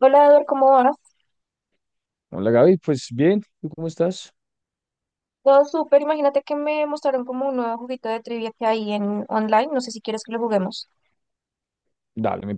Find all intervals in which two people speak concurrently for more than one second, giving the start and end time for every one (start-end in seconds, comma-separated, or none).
none